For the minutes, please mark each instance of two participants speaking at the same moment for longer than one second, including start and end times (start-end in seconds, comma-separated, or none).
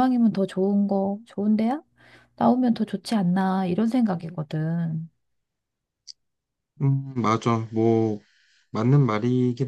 none